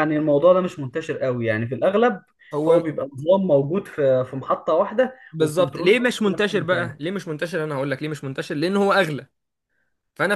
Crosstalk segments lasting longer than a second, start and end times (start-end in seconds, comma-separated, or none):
5.3-6.9